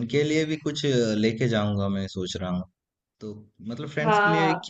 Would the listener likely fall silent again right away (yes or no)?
yes